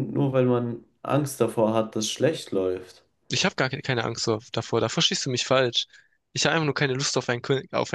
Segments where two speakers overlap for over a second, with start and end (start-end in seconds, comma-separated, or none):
none